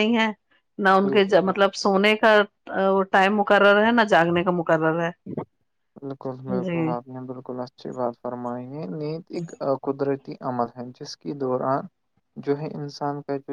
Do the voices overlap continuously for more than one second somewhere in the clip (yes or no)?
no